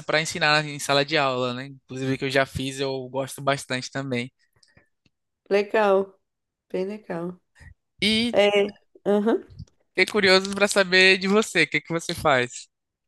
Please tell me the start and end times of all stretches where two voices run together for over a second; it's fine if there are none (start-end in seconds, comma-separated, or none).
none